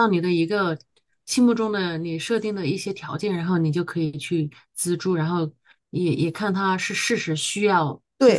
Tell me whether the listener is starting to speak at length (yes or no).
yes